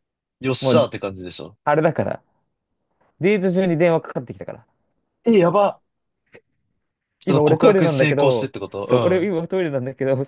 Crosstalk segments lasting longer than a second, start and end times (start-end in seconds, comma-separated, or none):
7.2-9.3